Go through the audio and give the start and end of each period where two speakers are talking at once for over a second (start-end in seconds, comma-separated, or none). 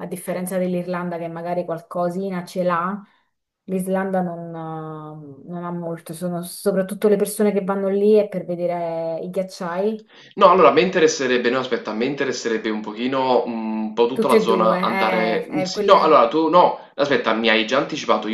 14.1-16.3